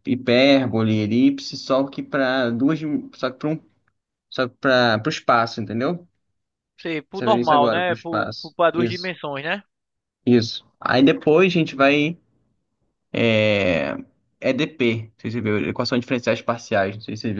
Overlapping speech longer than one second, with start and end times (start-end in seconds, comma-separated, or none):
7.1-9.2